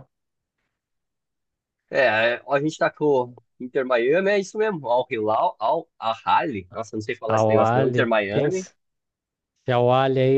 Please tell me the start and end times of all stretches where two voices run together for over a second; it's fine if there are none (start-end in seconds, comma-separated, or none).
7.3-8.6